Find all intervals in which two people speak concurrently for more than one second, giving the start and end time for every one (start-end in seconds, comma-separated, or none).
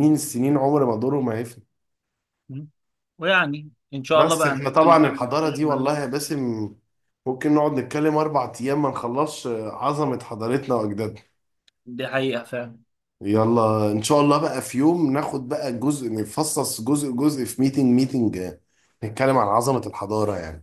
4.1-5.9